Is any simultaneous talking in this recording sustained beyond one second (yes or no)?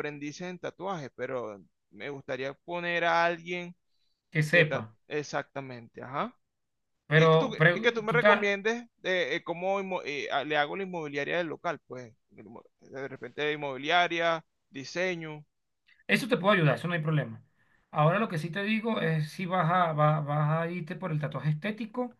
yes